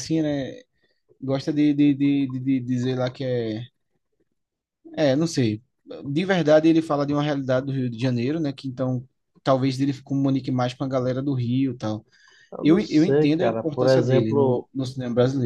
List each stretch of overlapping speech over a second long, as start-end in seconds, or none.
12.6-14.7